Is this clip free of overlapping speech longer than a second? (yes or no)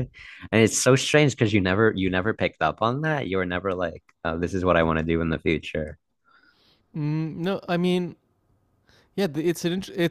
yes